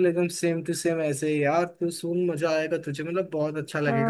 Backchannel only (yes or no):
no